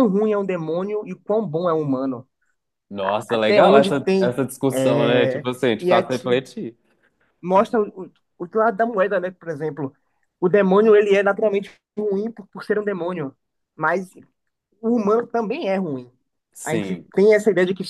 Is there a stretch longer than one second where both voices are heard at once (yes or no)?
yes